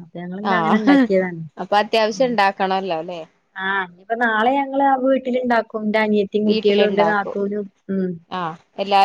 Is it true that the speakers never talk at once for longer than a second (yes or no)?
yes